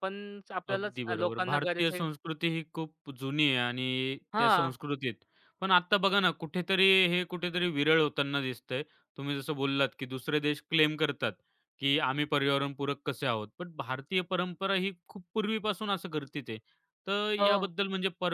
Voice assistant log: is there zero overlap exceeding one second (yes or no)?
no